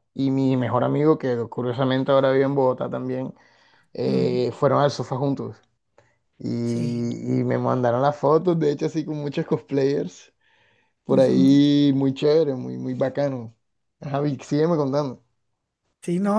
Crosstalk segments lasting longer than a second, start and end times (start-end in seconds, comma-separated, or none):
none